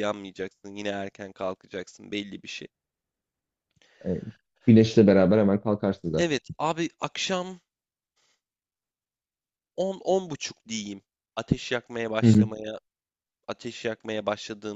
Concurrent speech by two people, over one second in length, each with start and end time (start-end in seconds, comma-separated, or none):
none